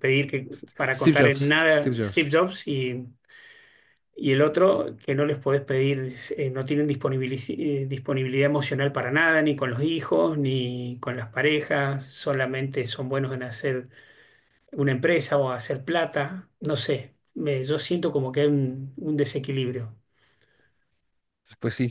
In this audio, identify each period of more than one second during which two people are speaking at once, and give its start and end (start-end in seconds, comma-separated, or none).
0.9-2.3